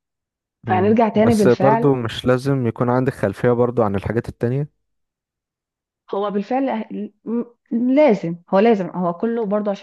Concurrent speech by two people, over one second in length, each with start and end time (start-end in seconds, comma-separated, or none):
0.7-1.9